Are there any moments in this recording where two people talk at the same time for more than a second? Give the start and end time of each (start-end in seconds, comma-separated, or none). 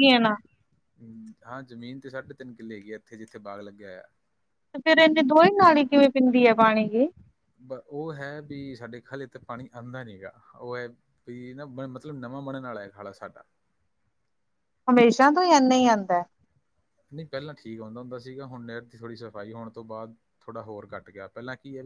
none